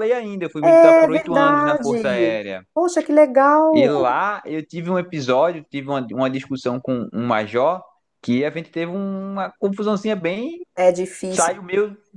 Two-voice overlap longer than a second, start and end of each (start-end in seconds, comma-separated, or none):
0.6-2.6